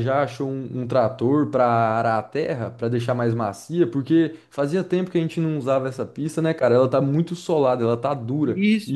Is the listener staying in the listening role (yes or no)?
no